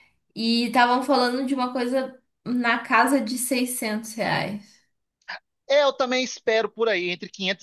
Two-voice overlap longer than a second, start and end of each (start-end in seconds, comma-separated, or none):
none